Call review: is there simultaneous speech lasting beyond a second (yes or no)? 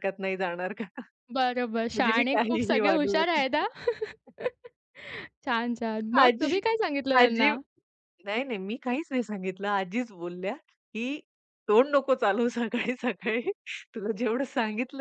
yes